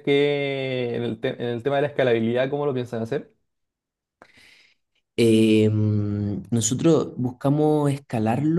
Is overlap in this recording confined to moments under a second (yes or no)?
yes